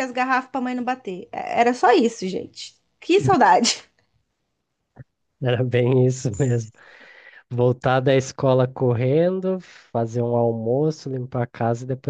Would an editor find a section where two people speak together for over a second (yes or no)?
no